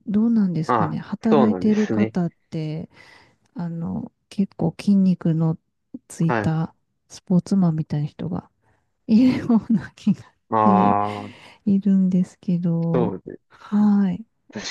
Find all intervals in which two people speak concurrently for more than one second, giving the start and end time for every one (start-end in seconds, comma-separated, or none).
0.7-2.1